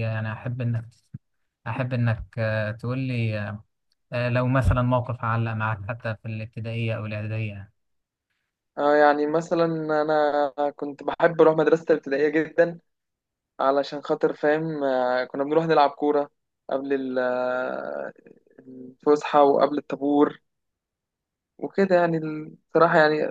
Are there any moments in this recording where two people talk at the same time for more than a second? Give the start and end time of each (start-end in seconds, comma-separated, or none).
none